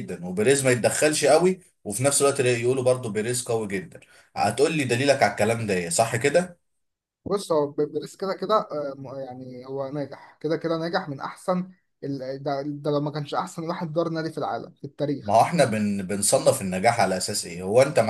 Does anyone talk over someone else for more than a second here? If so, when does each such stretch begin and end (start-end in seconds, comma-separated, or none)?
none